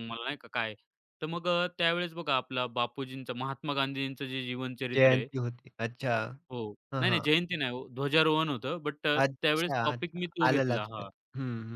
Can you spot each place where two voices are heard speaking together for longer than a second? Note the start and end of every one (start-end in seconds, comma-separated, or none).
9.2-11.1